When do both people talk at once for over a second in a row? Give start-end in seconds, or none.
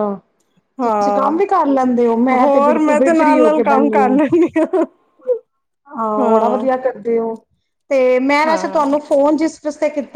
2.4-4.1